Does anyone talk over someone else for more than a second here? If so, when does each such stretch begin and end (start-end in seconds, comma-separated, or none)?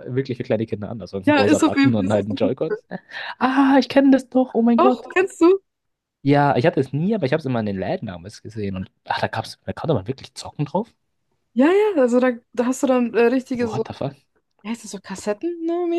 1.3-2.5